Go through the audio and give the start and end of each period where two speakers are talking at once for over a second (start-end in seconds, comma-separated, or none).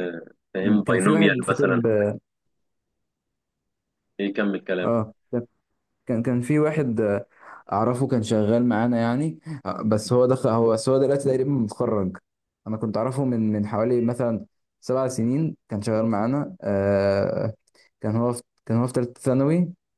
0.6-1.8